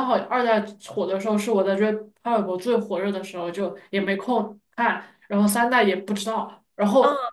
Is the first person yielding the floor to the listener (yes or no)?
no